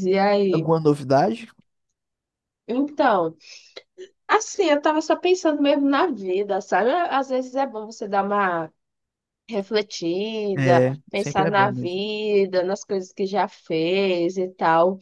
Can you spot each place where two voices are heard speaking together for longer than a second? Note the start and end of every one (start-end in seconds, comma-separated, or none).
10.6-12.0